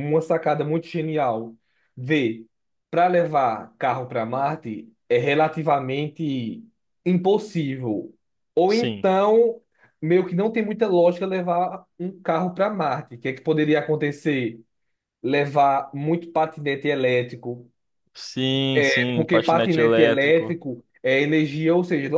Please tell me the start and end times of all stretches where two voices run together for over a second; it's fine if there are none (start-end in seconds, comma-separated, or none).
19.1-20.6